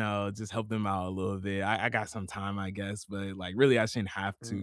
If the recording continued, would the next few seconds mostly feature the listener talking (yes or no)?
yes